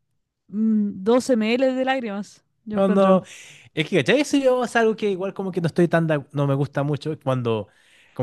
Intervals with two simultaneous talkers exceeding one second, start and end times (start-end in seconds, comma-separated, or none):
none